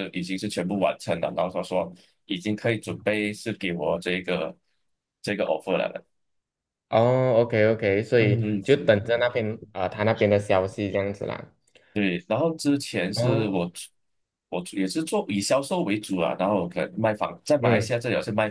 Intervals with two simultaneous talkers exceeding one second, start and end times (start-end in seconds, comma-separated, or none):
none